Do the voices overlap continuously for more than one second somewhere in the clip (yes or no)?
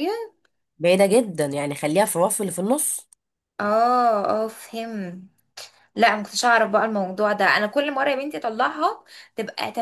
no